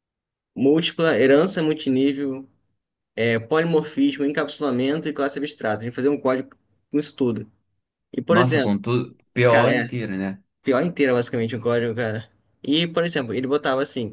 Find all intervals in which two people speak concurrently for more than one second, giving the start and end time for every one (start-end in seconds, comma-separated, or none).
none